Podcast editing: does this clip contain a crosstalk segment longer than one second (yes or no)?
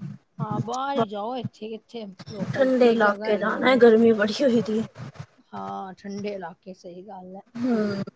yes